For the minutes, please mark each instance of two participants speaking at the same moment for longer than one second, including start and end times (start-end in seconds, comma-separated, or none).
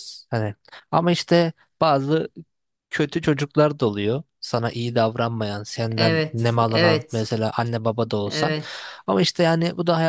6.0-7.3